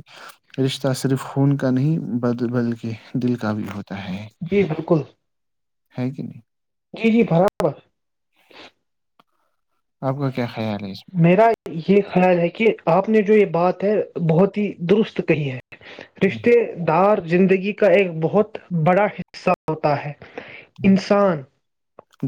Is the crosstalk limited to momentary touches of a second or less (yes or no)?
yes